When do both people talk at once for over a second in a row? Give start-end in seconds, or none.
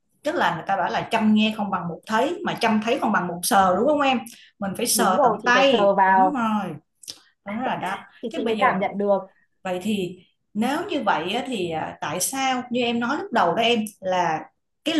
4.9-6.5